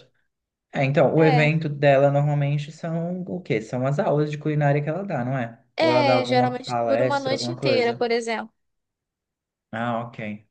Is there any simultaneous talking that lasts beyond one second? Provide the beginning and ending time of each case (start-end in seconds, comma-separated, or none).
5.8-8.0